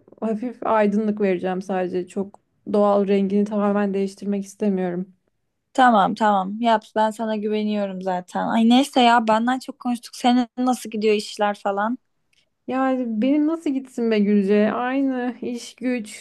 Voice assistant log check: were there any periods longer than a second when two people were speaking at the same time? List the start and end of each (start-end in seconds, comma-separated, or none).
none